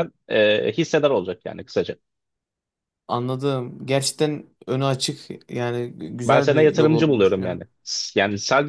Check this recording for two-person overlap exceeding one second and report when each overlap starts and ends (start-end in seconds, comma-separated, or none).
6.2-7.6